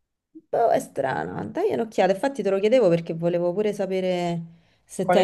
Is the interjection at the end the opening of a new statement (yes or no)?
yes